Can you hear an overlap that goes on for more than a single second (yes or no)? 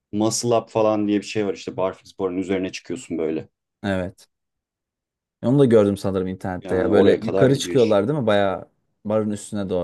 yes